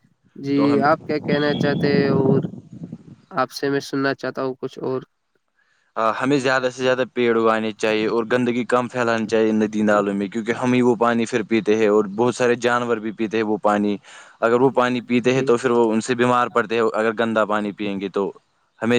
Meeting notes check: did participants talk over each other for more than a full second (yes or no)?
no